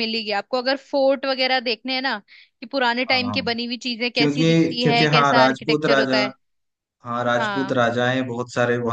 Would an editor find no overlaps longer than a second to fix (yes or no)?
no